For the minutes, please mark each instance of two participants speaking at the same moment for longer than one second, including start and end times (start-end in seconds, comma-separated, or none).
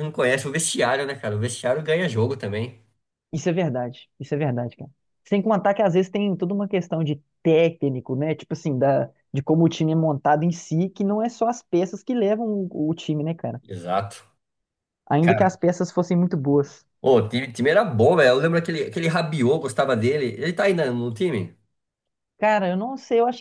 none